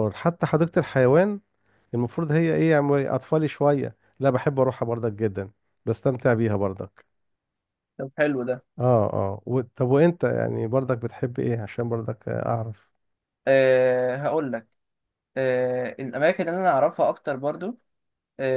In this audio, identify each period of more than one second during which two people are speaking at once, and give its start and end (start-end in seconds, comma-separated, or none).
none